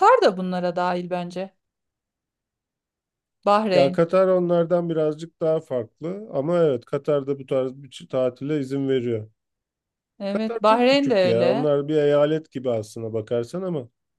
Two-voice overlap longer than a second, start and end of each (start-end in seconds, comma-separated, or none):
10.3-11.7